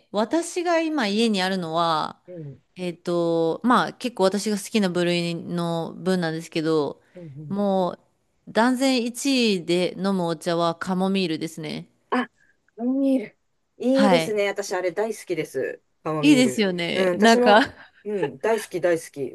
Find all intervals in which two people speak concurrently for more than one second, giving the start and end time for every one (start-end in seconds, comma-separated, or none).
16.2-17.7